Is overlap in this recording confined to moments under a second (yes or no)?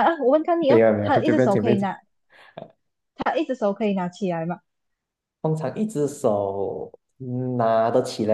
no